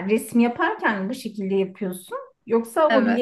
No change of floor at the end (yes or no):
yes